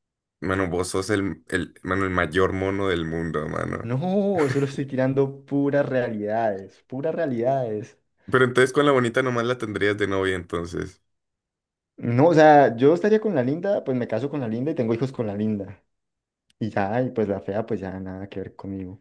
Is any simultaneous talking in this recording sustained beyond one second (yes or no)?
no